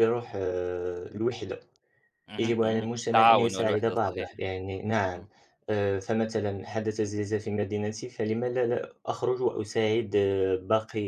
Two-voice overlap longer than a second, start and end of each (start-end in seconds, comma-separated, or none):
2.4-4.3